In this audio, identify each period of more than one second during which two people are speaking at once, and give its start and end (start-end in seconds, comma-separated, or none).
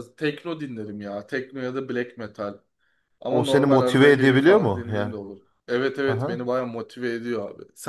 3.3-5.1